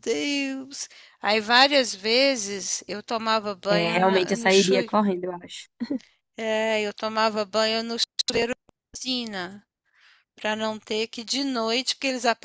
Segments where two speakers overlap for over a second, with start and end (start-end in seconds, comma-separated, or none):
3.7-4.9